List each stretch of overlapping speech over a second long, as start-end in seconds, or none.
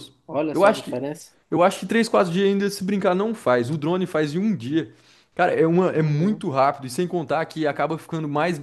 none